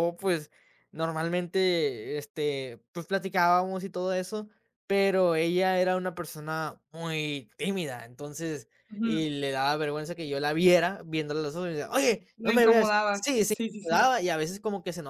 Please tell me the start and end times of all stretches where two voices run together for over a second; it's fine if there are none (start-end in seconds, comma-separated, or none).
12.4-14.2